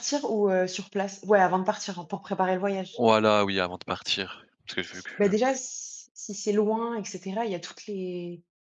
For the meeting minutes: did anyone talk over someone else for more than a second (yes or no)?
no